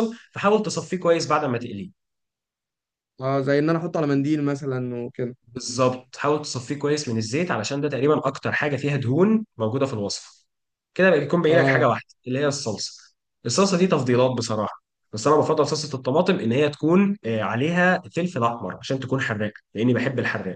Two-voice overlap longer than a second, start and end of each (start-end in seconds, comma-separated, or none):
none